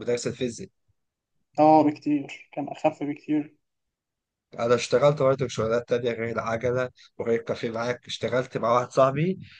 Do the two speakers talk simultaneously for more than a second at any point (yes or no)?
no